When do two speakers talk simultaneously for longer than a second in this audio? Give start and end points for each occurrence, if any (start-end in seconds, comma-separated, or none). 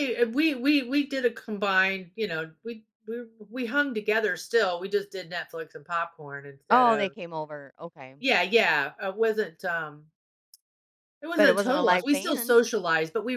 11.3-12.6